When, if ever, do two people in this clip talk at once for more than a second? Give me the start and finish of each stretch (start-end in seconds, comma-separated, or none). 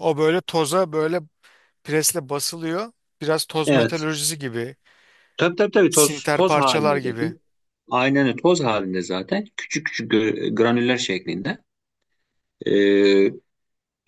5.9-7.3